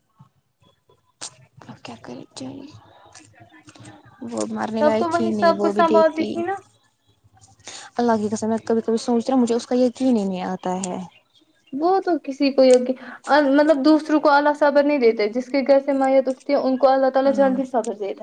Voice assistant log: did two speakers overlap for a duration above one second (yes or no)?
yes